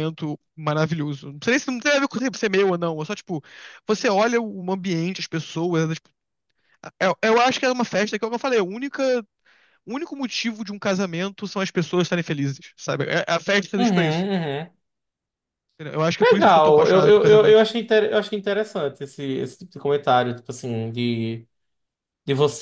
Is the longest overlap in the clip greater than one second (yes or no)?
yes